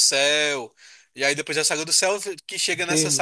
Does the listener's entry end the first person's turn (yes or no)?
yes